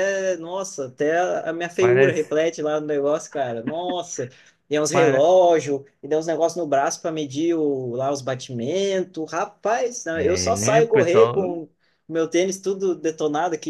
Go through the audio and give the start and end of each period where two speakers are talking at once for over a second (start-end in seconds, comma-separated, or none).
10.1-11.6